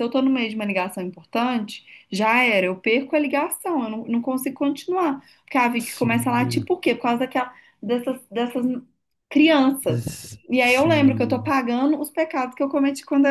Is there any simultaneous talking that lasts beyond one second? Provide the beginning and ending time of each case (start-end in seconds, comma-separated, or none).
9.9-11.5